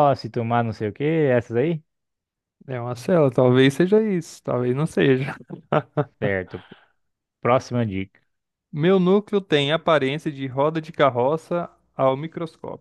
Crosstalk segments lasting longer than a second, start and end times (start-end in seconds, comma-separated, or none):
none